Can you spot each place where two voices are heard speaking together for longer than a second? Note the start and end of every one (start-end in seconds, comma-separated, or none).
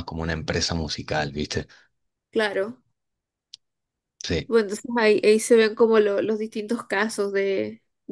none